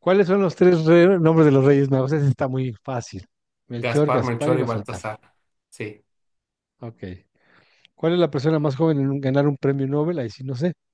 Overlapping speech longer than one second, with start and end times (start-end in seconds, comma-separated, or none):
3.8-5.0